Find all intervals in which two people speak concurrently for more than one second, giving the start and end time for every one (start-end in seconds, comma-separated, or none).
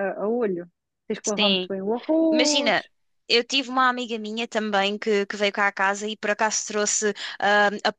none